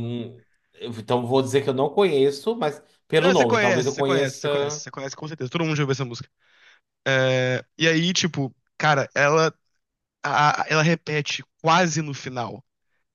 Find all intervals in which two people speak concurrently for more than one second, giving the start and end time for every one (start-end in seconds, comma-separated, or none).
3.2-4.8